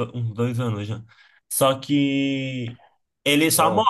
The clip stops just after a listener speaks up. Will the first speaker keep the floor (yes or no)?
yes